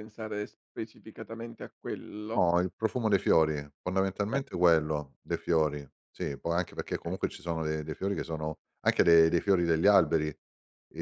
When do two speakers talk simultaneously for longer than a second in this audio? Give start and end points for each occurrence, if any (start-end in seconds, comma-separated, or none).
none